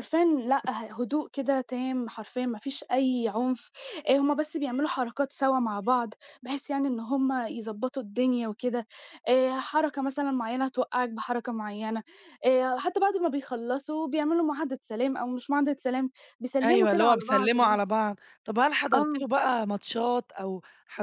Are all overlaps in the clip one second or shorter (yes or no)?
no